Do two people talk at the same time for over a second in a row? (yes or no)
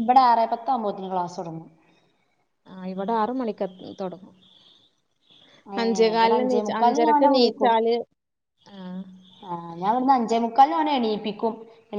yes